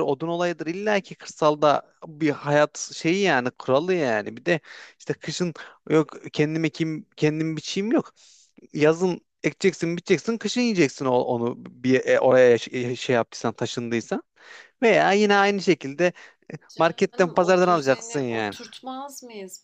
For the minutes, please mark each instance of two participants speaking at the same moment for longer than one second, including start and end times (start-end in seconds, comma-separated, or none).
16.8-18.6